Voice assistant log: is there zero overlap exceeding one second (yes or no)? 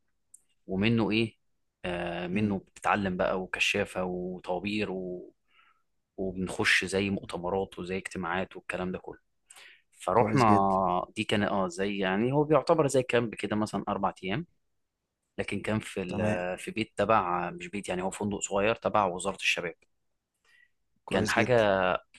yes